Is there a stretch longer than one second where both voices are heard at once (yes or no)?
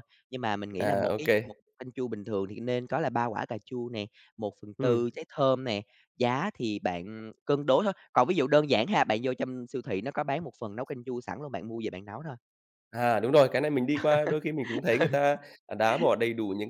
no